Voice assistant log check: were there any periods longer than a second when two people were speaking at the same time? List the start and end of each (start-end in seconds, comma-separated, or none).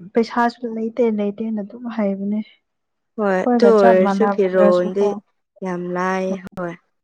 3.2-5.1